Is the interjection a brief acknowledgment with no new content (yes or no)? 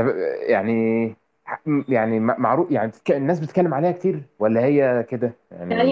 no